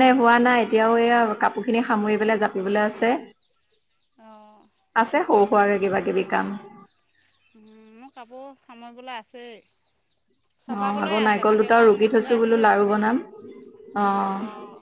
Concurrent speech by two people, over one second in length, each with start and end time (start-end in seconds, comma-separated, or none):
10.7-12.7